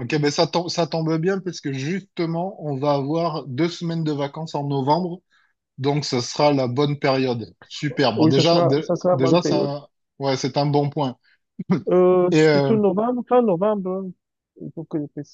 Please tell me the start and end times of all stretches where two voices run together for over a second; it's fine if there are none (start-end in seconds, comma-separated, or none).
8.2-9.7